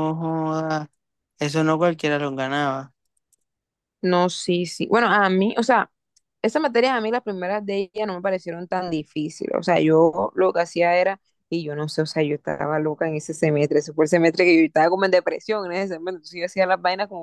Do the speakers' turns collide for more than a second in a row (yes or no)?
no